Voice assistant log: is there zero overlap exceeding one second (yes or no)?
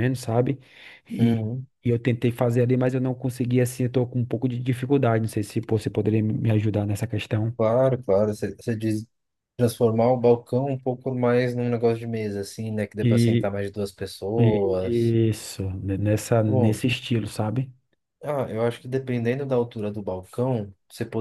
yes